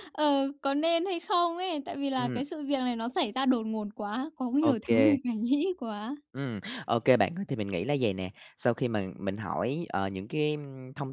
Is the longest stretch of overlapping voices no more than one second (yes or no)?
yes